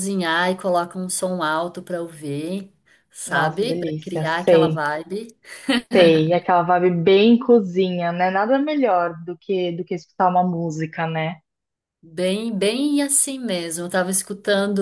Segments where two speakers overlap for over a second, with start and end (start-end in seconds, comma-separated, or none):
3.3-4.8